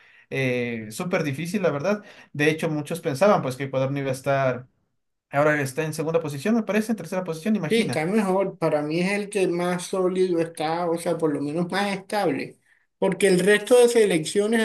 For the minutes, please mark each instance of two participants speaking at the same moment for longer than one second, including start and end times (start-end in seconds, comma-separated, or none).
none